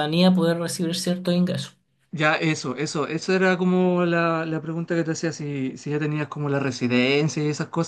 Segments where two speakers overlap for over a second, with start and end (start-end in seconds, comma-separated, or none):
none